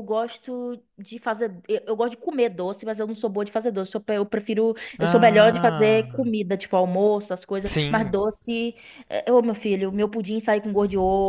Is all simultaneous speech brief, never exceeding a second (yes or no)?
no